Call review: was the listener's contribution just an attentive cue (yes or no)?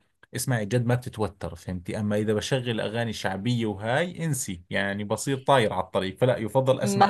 no